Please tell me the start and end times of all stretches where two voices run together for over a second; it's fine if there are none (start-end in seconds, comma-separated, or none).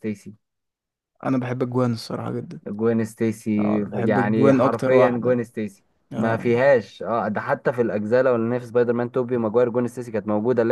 3.6-5.4